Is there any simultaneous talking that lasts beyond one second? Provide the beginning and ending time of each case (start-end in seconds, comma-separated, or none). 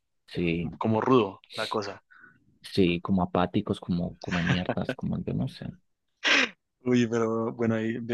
none